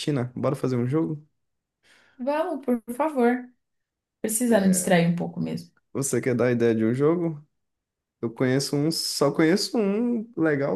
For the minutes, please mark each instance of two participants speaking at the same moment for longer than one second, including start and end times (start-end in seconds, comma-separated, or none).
none